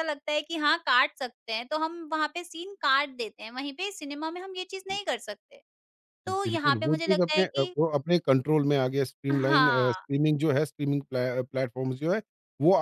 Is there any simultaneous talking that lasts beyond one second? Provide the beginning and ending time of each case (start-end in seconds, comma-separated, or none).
6.3-7.7